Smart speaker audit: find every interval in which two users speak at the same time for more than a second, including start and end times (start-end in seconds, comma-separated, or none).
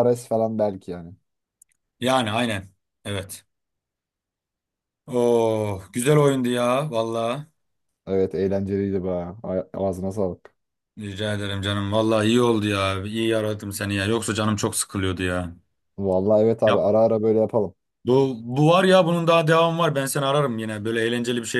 none